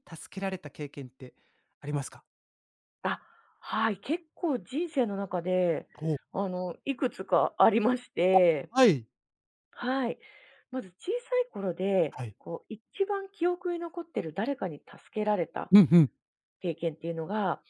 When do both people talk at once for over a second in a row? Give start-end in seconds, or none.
none